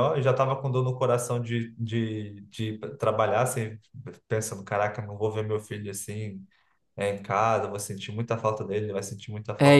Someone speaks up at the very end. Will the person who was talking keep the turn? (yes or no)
no